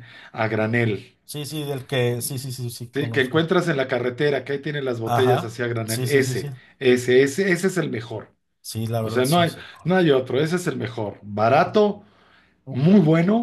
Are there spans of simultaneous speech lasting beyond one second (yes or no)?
yes